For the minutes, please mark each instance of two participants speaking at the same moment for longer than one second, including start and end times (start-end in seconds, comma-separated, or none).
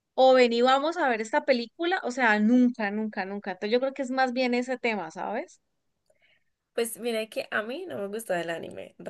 none